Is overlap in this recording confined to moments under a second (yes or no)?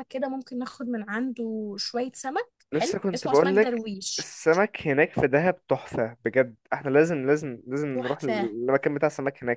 no